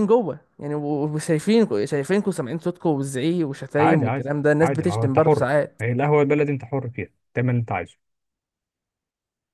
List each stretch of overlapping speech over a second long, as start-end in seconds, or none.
3.8-5.8